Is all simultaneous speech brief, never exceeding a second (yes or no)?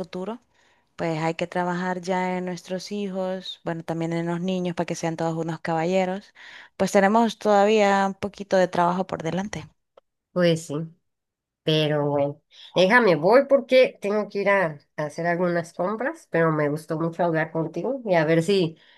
yes